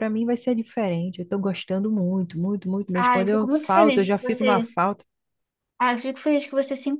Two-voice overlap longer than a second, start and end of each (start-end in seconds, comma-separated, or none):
3.0-4.7